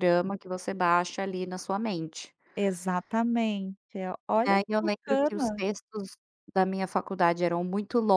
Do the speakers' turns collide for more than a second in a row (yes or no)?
yes